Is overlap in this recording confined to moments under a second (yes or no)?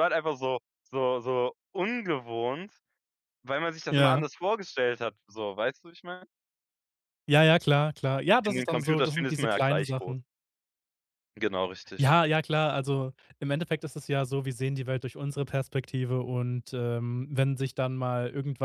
no